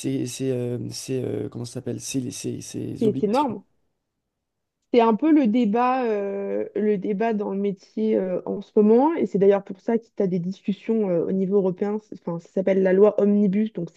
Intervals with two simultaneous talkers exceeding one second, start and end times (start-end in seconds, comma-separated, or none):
none